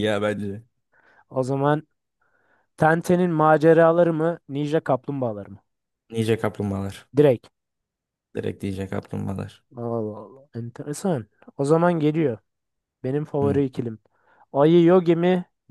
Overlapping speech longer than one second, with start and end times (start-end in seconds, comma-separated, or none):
none